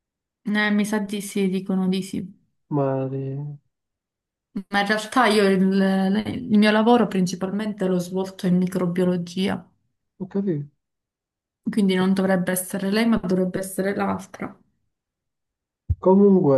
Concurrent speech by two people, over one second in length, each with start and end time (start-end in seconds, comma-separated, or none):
none